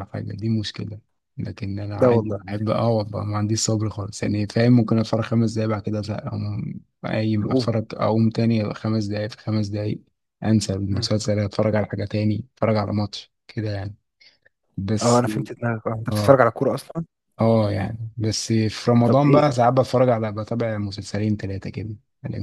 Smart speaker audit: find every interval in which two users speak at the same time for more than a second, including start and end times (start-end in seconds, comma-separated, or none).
none